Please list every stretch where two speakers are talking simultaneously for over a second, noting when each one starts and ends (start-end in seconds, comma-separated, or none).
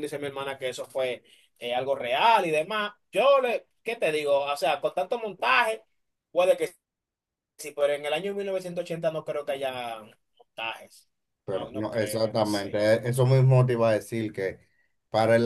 11.5-12.9